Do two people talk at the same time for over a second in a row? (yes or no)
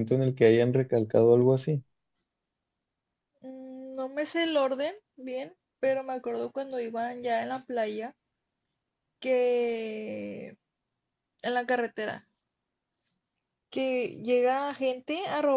no